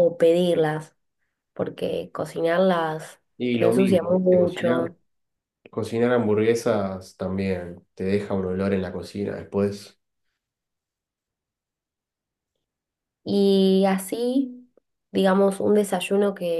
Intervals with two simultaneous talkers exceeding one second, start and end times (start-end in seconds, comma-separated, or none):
3.6-4.8